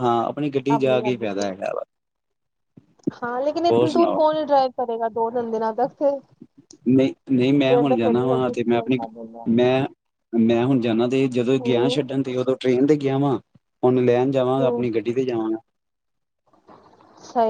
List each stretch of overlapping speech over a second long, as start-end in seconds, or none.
7.7-9.0